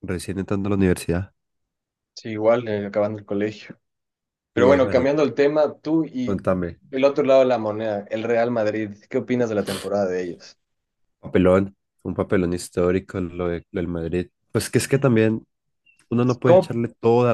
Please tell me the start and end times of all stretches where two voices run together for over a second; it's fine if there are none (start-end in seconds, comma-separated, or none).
none